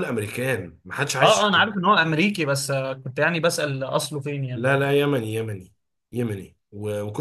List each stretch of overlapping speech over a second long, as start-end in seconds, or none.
none